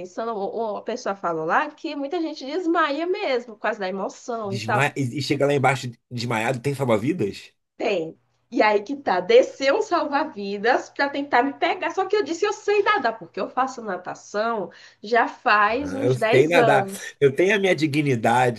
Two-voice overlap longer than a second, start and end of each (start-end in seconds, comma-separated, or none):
15.8-17.1